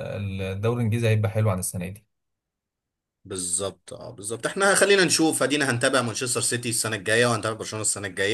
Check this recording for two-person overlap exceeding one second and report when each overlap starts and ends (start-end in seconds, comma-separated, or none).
none